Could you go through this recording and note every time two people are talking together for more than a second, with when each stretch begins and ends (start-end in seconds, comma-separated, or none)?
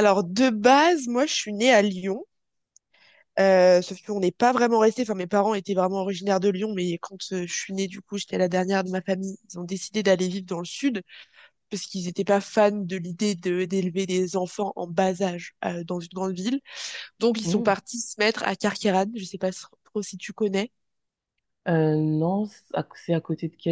none